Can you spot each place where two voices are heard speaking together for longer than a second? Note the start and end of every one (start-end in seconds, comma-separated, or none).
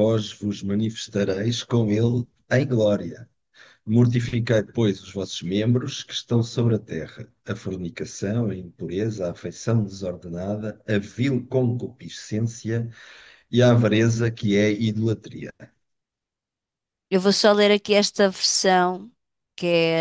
none